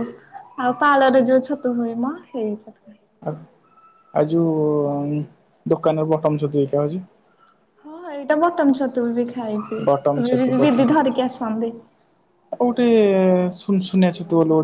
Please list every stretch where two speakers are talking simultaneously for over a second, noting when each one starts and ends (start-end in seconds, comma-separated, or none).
none